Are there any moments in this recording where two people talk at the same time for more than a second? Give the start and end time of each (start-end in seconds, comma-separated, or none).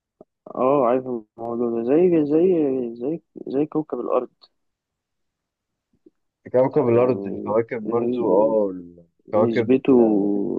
6.9-8.6